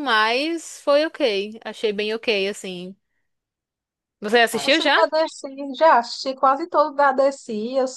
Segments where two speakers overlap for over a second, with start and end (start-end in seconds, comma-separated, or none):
none